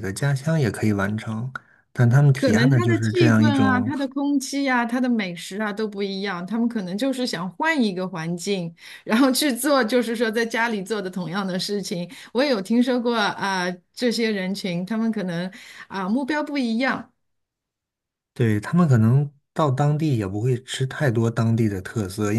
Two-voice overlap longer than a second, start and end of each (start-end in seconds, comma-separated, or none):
2.4-3.9